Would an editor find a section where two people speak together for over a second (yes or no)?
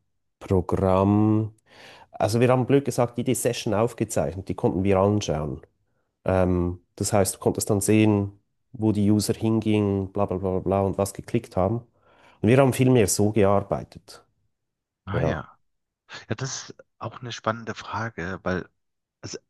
no